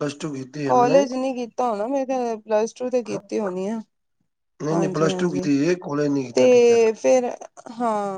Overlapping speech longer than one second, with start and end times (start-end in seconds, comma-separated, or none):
none